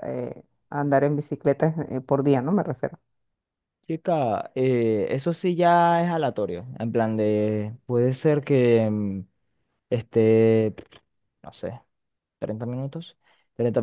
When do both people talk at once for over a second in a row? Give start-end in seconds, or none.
none